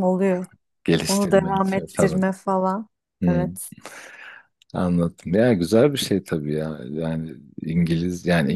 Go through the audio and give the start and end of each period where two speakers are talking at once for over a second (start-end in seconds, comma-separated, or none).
1.1-2.3